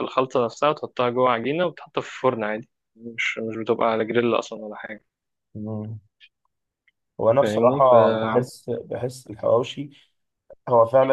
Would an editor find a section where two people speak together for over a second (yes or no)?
no